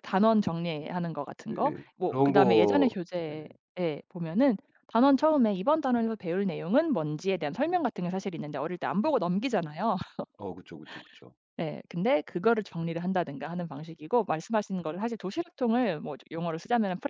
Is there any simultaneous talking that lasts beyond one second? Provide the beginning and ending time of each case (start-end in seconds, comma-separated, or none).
1.5-3.5